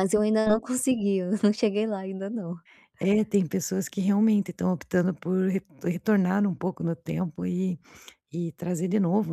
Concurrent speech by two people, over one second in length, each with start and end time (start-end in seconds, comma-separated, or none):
none